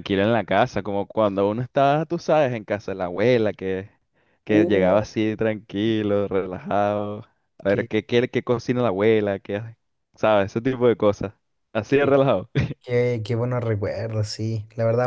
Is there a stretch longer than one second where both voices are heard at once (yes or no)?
no